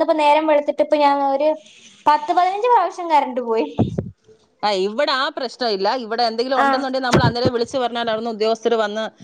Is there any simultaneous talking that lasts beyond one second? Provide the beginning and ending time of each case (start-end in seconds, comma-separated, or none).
none